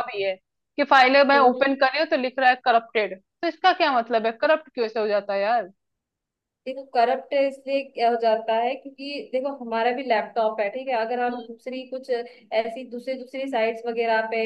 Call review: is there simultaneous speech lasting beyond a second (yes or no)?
no